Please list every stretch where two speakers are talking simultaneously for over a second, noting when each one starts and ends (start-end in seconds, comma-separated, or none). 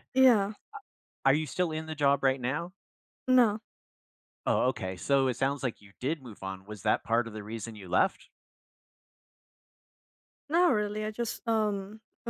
none